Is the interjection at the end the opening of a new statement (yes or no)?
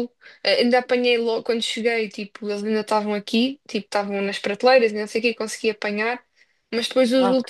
no